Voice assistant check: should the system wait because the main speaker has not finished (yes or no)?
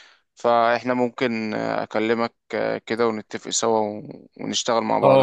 no